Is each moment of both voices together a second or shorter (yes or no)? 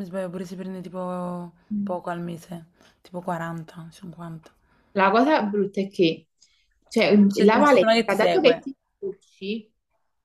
no